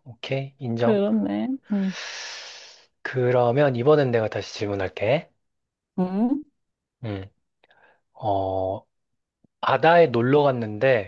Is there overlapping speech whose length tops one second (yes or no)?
no